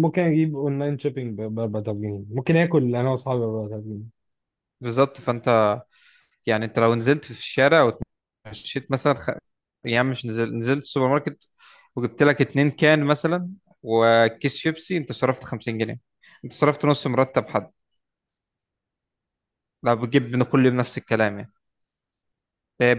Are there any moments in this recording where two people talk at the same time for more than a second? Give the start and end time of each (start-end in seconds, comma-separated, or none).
none